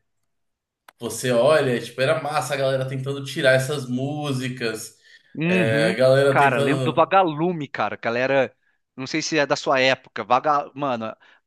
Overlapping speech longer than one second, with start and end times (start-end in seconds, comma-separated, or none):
5.4-7.1